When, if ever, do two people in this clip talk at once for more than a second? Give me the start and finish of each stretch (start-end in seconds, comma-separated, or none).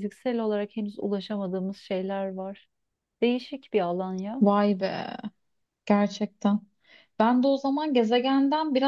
none